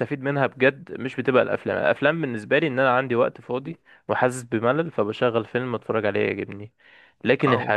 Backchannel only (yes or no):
yes